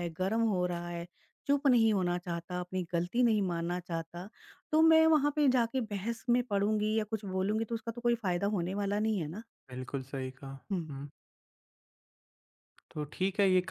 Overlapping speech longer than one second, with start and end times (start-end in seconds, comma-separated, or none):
none